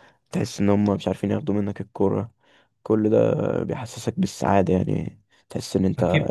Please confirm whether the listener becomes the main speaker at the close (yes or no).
yes